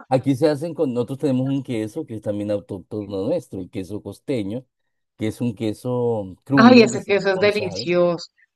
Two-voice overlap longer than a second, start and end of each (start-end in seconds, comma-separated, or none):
6.7-7.9